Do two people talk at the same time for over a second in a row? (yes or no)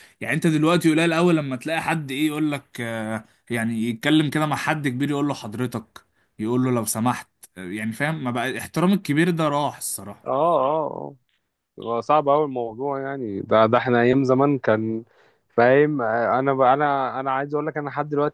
no